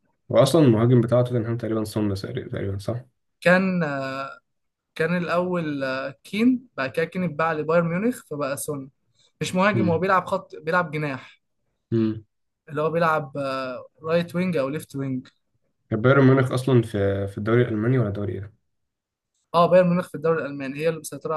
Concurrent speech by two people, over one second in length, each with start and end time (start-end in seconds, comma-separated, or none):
none